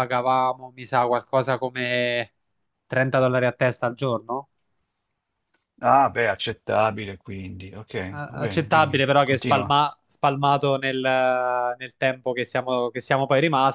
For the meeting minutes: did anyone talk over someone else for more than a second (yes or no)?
yes